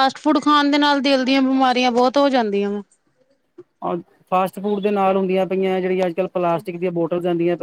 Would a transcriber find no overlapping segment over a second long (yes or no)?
yes